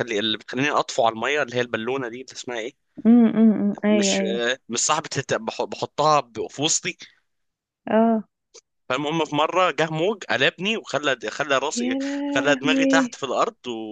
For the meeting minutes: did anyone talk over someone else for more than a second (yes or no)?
yes